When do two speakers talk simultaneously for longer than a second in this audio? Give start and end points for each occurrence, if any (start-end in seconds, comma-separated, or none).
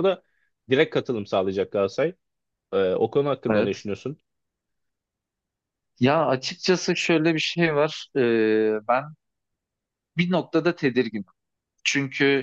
none